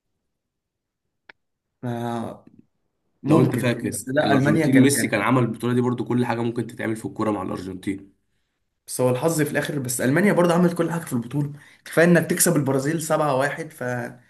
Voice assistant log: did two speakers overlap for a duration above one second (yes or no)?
yes